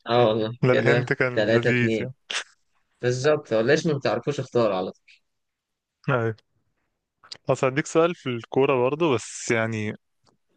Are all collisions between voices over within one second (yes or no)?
no